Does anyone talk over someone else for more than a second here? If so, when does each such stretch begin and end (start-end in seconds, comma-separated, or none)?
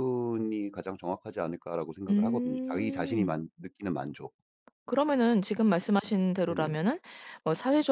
2.1-3.4